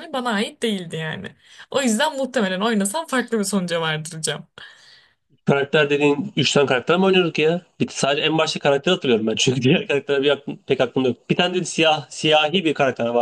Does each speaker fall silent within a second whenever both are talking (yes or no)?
yes